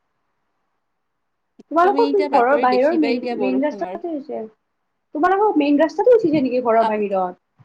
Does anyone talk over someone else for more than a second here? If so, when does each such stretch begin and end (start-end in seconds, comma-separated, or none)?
1.8-4.0